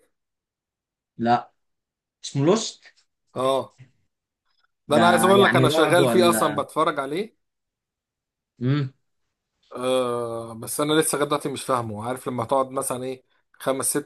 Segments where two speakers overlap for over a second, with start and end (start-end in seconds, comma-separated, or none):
4.9-6.6